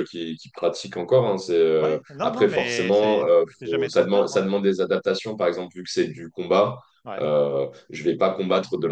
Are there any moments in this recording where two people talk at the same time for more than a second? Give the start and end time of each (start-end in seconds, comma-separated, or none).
1.8-4.4